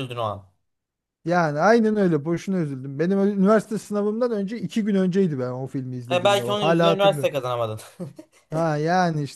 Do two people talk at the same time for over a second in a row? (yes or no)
yes